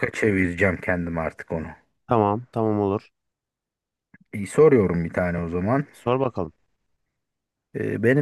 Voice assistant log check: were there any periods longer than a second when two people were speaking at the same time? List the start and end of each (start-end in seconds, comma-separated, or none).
none